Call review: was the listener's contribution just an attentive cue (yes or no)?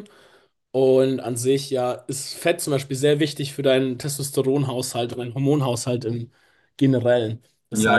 no